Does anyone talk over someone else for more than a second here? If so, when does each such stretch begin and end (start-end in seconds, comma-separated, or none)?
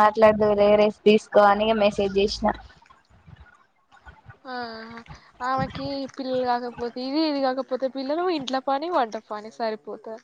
none